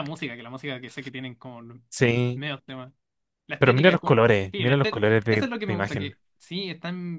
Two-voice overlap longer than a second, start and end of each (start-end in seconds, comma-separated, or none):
3.6-6.2